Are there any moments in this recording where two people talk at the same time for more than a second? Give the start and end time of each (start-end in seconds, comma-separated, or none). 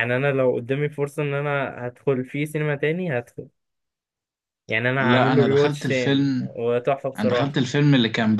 5.0-6.6